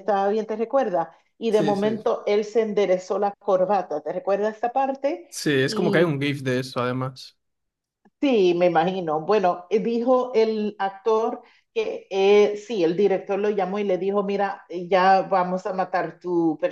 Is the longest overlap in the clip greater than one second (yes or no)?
no